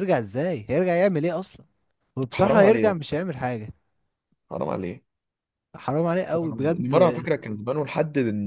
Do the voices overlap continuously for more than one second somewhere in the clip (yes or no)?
no